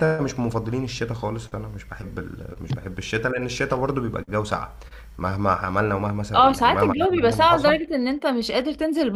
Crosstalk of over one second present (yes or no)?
yes